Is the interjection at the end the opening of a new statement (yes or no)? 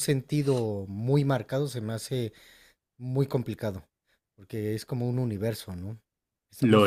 no